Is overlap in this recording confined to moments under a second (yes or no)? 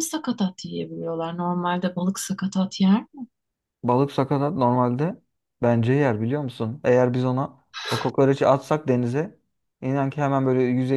yes